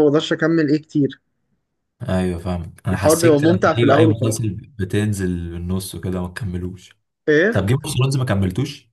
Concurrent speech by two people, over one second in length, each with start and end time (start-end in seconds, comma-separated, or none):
2.9-4.4